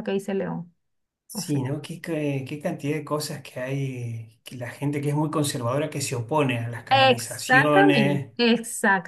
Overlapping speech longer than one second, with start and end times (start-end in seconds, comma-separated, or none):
6.9-8.3